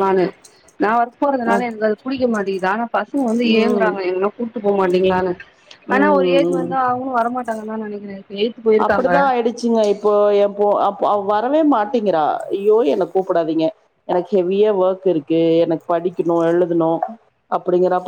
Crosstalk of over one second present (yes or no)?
no